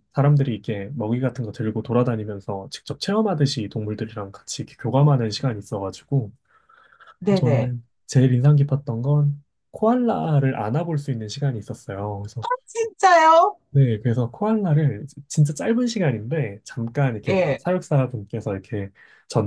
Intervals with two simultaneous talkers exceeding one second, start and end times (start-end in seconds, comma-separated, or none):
none